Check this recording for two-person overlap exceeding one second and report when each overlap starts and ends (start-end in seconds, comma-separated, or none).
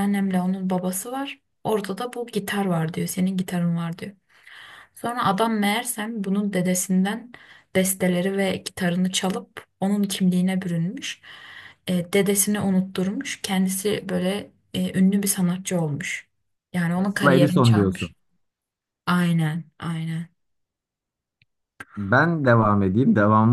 16.9-18.1